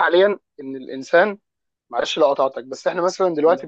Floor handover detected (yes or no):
no